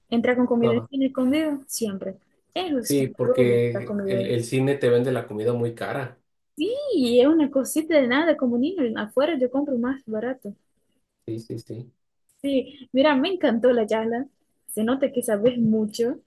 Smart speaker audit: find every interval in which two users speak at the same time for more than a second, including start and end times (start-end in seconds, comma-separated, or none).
2.8-4.3